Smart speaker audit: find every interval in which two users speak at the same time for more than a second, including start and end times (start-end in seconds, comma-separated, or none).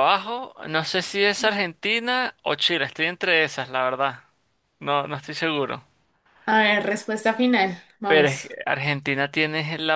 none